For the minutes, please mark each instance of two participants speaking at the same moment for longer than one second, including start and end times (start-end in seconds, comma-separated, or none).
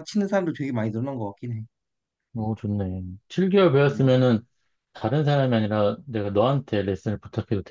none